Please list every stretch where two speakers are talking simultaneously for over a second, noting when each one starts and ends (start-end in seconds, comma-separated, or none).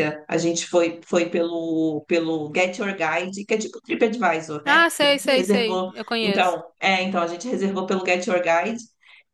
4.7-6.6